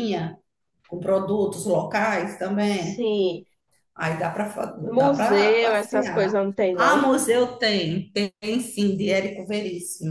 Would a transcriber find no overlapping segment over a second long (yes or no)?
no